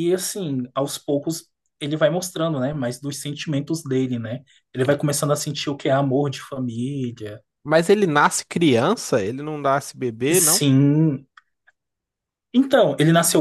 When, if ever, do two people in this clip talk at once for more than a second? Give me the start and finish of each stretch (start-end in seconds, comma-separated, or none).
none